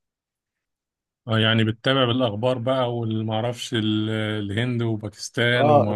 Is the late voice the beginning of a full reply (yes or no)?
yes